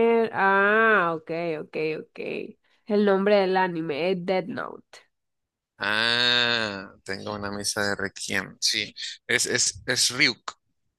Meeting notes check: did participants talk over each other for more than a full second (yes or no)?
no